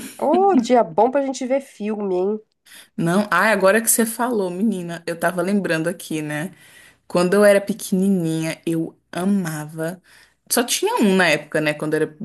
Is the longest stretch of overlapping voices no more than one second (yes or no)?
yes